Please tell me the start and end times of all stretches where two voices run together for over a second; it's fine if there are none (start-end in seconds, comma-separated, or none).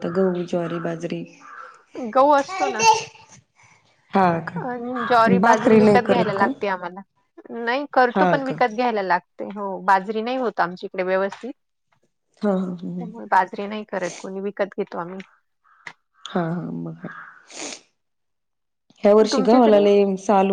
4.7-6.5